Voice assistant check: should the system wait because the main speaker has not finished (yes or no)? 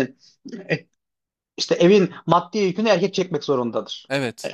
yes